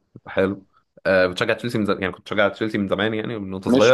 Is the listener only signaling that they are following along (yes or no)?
no